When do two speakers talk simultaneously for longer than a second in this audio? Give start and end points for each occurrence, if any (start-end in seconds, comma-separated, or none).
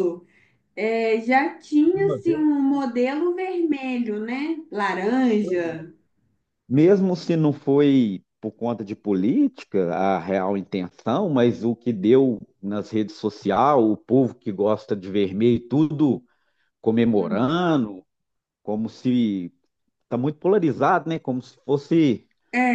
none